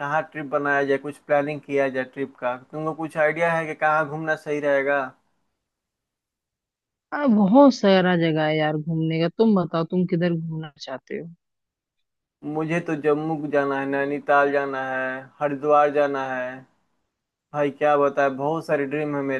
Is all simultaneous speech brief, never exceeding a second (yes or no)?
yes